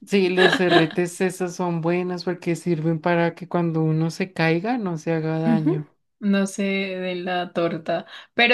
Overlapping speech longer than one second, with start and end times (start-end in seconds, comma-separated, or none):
none